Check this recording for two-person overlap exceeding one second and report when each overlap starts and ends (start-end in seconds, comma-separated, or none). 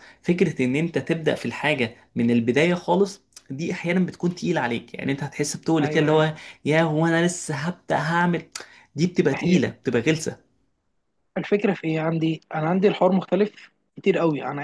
none